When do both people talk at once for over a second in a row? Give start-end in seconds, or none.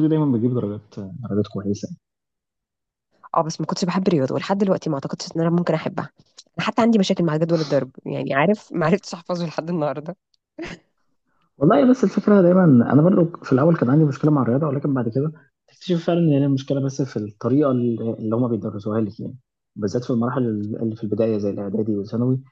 none